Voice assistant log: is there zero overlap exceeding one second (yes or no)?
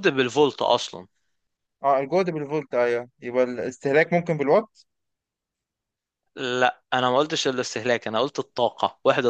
yes